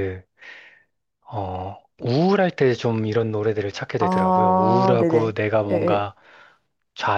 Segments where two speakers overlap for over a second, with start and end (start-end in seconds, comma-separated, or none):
4.0-6.1